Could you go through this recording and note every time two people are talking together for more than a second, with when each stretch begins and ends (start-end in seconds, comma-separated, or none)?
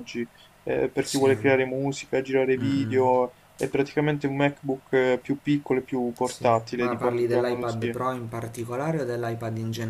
6.2-8.0